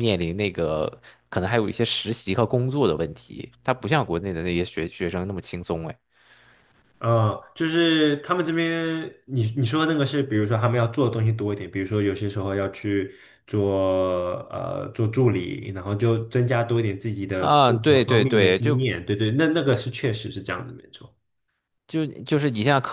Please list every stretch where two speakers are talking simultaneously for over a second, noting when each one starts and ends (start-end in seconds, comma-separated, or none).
17.4-18.9